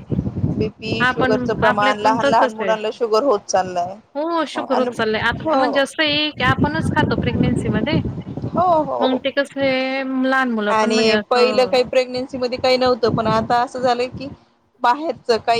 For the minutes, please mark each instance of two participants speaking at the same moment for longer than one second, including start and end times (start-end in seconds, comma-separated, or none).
1.1-2.7